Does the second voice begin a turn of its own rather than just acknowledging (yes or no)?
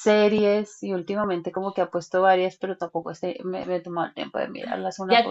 yes